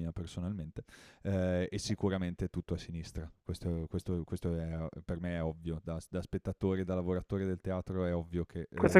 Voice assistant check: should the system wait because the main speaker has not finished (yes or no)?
no